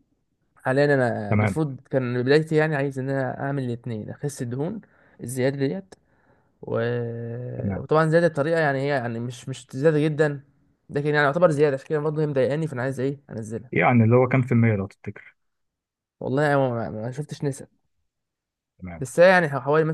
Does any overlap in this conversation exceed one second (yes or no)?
no